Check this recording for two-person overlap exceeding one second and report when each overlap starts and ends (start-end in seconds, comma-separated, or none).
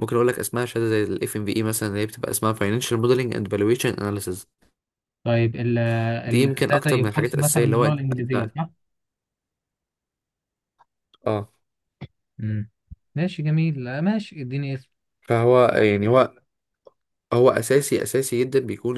6.3-8.5